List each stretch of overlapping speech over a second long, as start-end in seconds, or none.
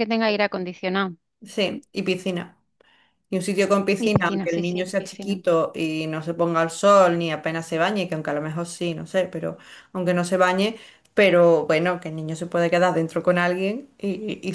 4.0-5.4